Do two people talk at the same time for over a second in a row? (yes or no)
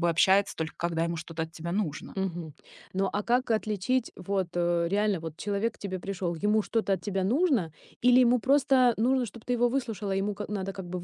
no